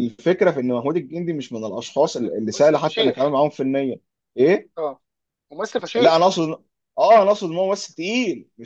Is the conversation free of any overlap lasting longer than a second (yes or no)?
no